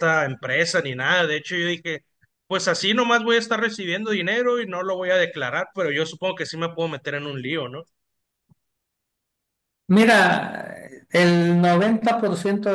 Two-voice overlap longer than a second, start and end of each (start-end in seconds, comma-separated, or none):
none